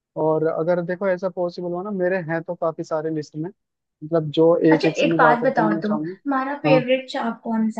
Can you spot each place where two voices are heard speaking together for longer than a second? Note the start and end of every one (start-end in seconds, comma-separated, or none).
4.7-6.8